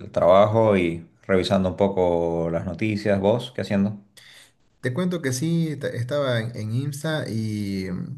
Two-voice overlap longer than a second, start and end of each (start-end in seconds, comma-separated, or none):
none